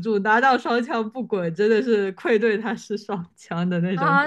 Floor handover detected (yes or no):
yes